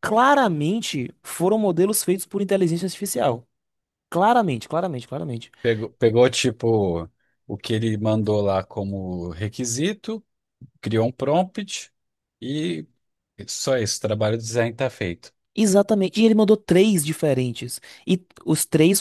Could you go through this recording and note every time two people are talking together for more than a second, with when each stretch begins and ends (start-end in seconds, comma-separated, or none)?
none